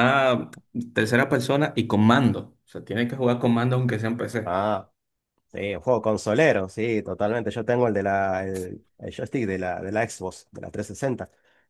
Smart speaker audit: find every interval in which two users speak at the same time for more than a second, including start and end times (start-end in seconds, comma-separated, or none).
none